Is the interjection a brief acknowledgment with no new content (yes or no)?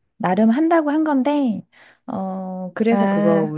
yes